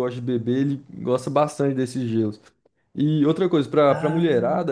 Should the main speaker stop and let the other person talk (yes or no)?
no